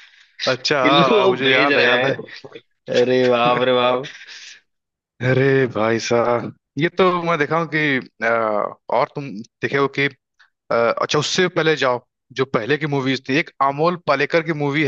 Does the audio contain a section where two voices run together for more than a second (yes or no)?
yes